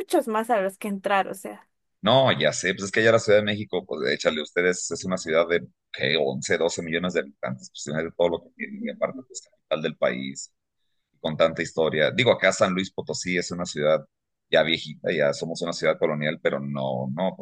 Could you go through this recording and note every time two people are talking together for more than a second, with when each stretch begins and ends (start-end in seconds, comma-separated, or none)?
none